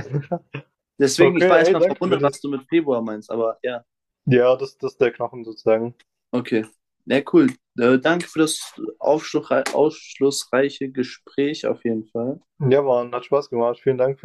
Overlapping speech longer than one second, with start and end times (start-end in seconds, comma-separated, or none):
1.2-2.5